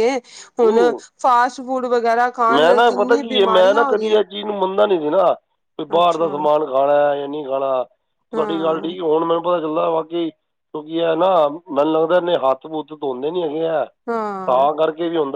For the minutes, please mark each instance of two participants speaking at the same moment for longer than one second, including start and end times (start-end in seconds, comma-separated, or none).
2.5-4.2